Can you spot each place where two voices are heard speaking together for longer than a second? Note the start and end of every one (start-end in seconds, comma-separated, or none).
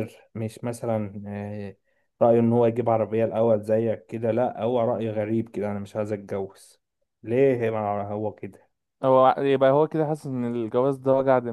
none